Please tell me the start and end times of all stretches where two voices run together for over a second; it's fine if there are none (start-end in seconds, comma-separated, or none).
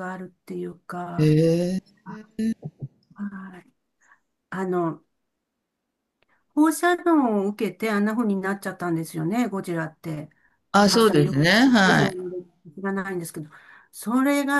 10.7-12.2